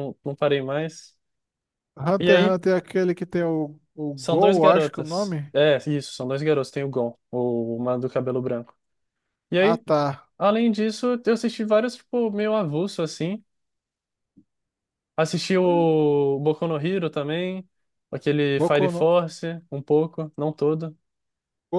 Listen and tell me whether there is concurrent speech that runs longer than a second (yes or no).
yes